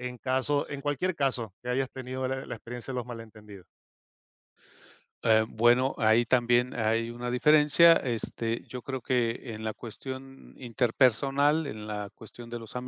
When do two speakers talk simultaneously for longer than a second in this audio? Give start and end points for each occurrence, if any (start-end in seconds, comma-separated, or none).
none